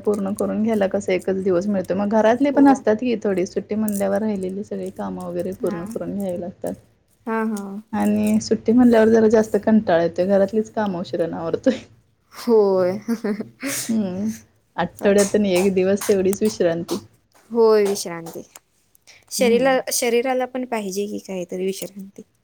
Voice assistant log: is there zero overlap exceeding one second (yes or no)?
yes